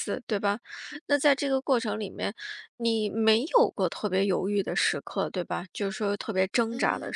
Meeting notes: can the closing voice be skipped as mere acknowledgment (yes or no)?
no